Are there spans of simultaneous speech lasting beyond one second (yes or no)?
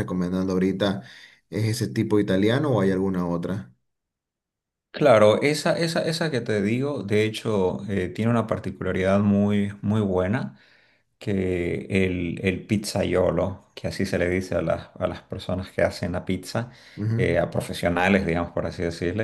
no